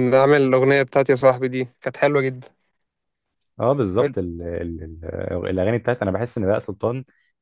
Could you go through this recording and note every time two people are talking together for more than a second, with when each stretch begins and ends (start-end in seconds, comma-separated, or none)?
none